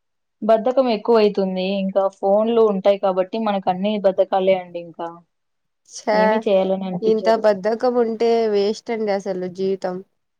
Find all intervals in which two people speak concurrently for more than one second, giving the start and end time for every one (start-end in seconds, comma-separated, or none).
none